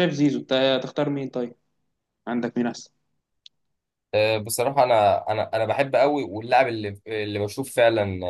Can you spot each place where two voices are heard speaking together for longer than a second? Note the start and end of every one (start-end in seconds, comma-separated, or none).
none